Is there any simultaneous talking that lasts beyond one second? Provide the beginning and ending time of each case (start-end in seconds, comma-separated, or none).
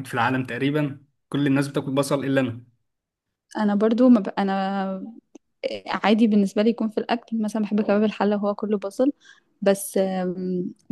none